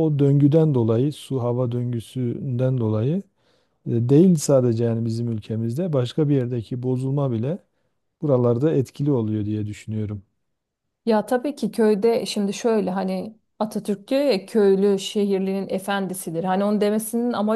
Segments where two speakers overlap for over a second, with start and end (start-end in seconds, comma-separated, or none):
none